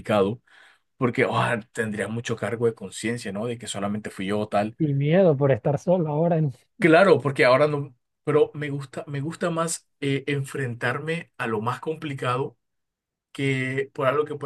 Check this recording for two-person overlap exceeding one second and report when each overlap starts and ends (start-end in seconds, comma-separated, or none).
none